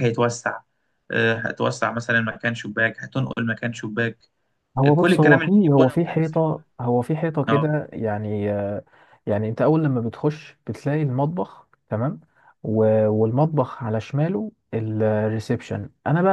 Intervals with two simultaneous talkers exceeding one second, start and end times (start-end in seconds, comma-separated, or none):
4.8-6.4